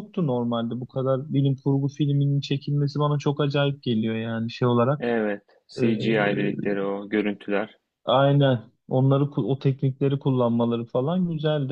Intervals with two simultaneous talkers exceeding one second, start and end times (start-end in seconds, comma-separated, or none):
none